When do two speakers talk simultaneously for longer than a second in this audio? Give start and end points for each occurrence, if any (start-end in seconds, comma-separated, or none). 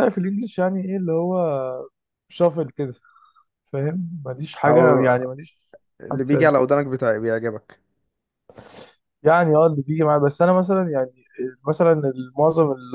none